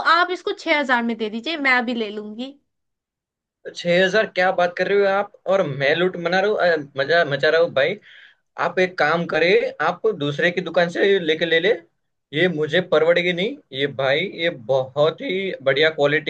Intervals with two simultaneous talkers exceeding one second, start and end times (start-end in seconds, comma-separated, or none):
none